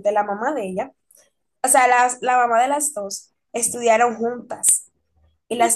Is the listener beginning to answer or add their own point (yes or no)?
yes